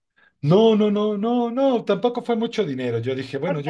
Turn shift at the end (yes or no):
no